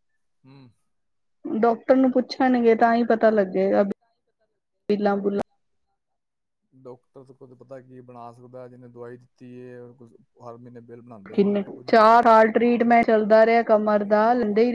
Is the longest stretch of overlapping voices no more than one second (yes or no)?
no